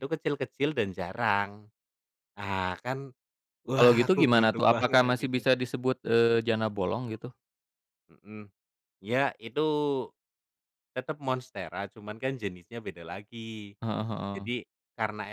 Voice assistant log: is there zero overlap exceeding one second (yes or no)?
no